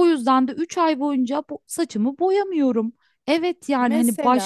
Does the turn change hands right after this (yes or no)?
no